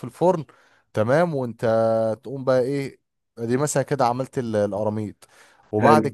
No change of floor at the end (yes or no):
no